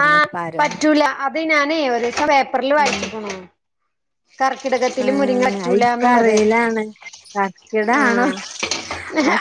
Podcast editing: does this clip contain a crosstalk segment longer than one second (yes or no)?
yes